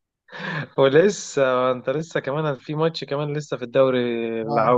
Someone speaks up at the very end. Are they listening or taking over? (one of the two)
taking over